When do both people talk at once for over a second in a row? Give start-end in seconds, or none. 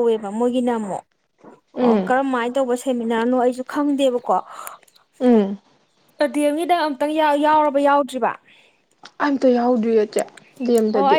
none